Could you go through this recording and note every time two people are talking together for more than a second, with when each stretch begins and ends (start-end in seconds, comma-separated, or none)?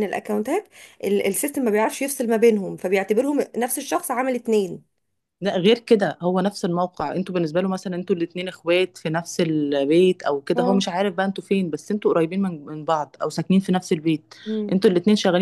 none